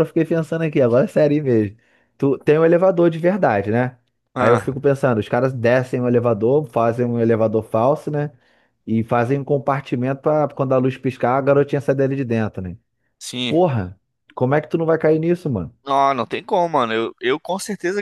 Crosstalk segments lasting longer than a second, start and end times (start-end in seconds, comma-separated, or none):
none